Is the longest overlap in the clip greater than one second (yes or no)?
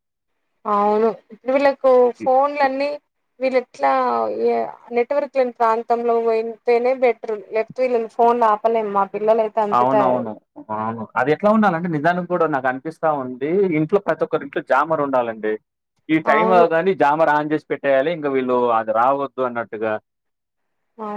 no